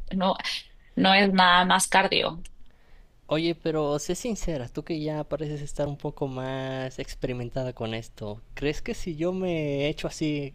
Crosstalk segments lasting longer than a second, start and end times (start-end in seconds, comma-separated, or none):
none